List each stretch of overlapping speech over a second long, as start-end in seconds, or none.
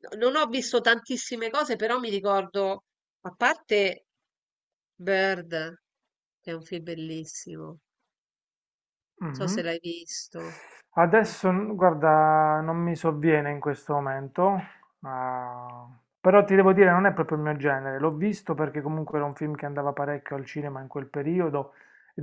none